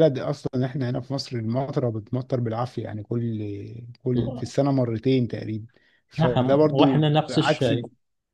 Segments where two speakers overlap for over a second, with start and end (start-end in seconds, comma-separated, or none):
6.2-7.7